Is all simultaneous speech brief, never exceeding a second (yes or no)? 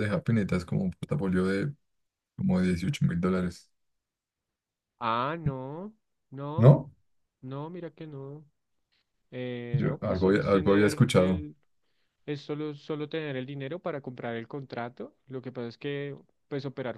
no